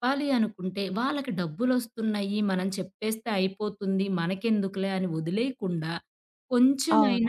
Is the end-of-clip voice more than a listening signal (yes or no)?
no